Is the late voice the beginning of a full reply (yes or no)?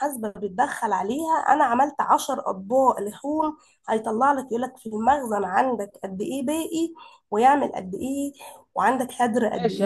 yes